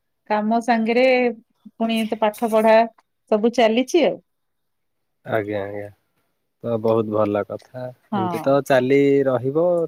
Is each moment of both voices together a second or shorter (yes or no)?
yes